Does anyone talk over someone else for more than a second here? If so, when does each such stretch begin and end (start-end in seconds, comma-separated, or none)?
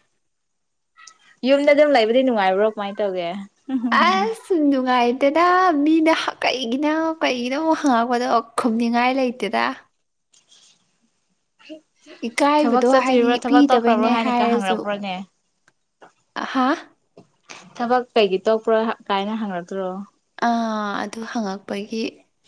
12.6-14.8